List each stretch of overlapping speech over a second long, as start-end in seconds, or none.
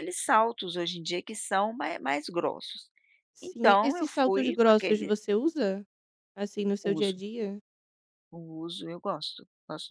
3.4-5.1